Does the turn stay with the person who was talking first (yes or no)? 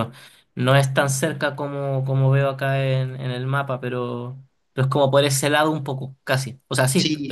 no